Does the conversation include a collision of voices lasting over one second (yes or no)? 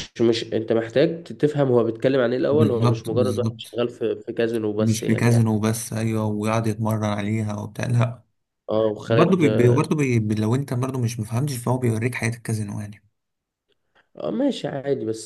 yes